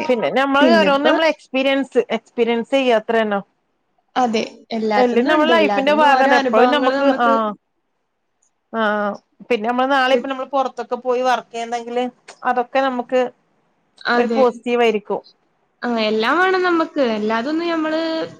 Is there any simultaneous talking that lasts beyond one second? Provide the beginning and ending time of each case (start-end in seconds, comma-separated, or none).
5.0-6.7